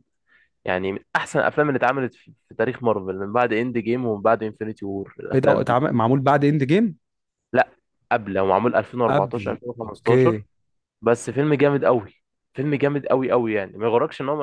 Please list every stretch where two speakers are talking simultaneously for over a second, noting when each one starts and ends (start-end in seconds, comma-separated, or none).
9.1-10.4